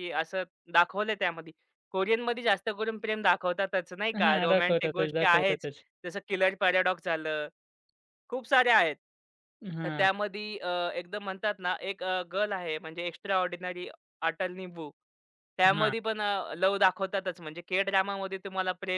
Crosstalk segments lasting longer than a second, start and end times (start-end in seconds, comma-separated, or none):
4.2-5.7